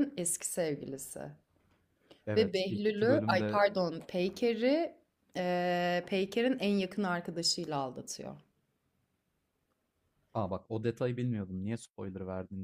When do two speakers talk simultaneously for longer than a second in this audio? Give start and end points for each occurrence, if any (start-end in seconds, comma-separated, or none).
2.4-3.6